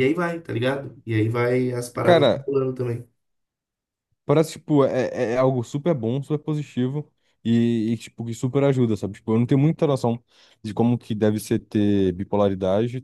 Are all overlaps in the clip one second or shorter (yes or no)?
yes